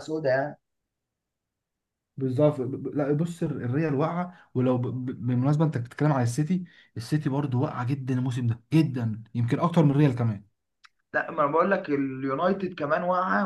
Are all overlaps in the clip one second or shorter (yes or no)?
yes